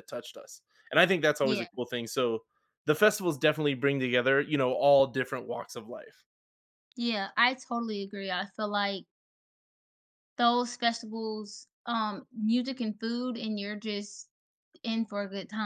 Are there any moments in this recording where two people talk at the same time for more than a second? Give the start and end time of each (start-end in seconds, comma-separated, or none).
none